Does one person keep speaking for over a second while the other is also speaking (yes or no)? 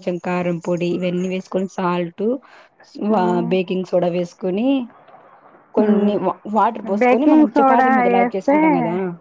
yes